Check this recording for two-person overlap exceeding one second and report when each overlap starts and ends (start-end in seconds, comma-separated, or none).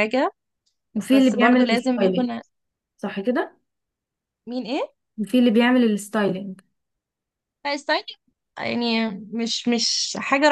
1.1-2.3